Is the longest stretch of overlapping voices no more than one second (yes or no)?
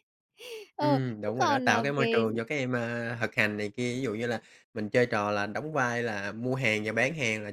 no